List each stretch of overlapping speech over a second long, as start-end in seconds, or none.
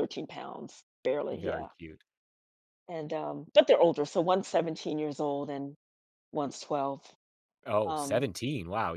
none